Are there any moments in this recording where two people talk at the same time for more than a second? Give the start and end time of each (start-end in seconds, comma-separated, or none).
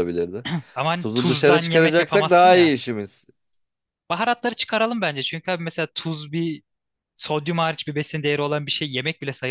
1.0-2.8